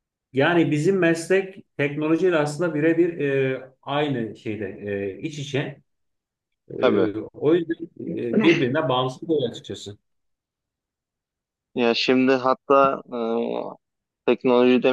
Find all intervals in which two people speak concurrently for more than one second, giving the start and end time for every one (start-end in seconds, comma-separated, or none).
none